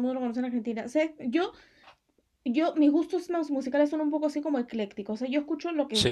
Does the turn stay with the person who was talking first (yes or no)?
yes